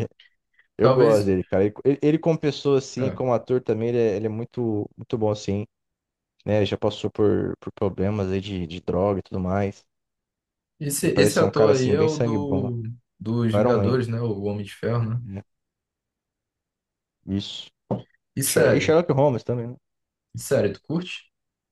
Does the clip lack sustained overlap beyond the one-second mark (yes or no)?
no